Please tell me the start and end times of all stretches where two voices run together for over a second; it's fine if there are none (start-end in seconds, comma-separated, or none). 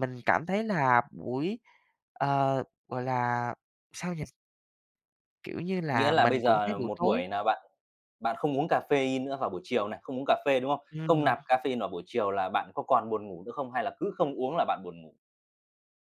5.9-7.2